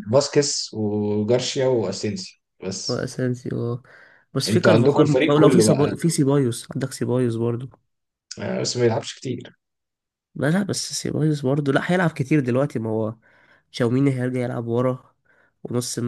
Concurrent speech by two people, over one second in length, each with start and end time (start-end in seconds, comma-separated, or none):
4.5-6.0